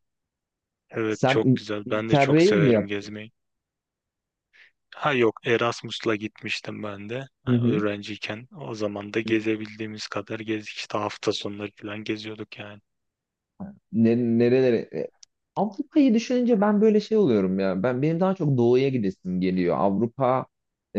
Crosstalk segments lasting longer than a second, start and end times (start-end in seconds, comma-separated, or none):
1.1-3.1